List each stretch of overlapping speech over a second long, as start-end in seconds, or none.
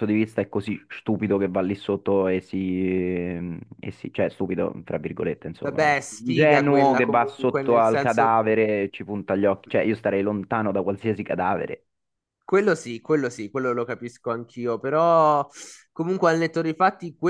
5.6-8.4